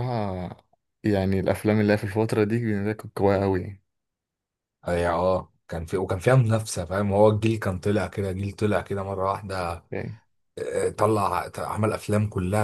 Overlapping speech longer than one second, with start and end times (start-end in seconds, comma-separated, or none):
none